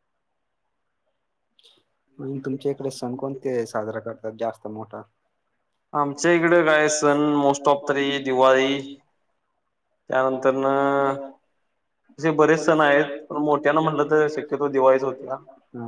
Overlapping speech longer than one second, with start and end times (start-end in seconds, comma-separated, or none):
none